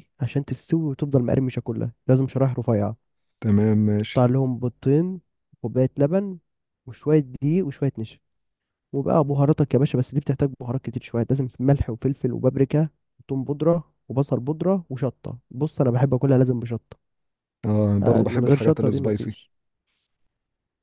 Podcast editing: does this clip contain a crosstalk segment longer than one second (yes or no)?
yes